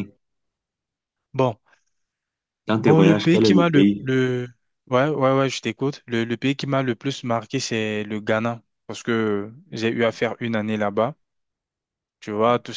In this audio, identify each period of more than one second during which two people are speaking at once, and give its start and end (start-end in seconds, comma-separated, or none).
2.7-4.1